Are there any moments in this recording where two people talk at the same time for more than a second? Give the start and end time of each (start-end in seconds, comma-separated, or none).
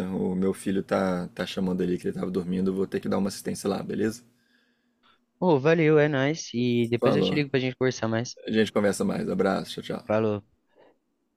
none